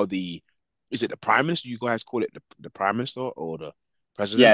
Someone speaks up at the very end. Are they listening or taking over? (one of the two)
taking over